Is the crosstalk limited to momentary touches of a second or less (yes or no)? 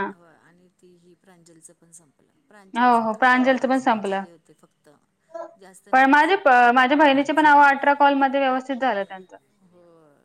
no